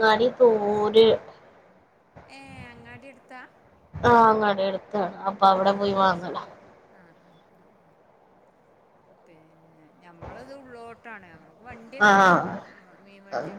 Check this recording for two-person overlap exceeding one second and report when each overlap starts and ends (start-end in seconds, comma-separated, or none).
none